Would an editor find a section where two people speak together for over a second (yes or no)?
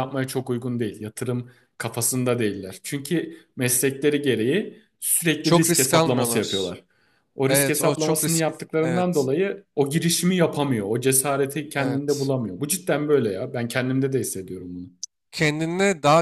yes